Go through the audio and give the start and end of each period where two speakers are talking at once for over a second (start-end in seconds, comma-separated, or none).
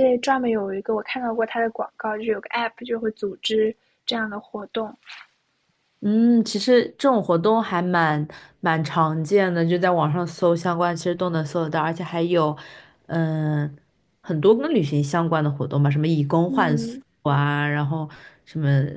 none